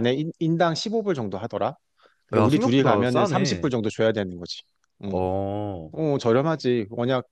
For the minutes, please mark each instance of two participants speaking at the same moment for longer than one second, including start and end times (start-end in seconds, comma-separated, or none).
2.4-3.7